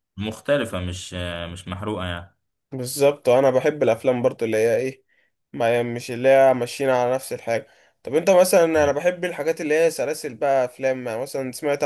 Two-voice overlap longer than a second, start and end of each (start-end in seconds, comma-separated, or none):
none